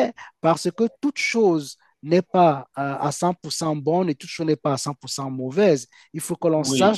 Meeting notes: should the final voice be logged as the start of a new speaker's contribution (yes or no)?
no